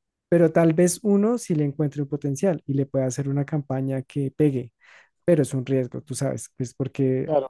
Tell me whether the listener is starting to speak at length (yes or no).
yes